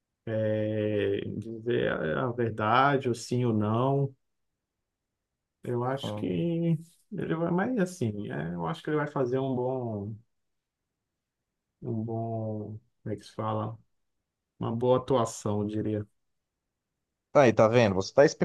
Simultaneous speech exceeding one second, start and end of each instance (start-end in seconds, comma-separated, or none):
none